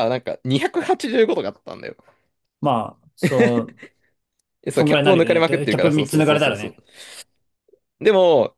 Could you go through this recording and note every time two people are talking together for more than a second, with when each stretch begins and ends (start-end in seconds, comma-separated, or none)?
4.7-6.8